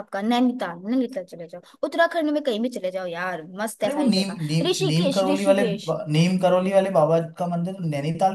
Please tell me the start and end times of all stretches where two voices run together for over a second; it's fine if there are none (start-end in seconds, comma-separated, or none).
3.8-5.9